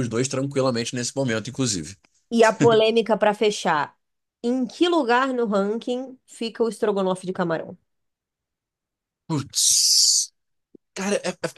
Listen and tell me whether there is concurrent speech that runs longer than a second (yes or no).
no